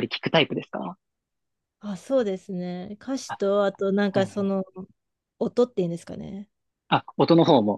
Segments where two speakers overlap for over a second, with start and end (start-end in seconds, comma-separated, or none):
none